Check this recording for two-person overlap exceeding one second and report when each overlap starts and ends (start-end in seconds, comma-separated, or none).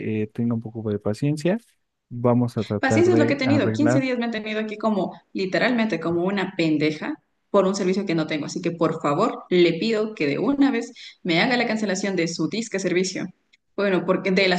2.8-4.0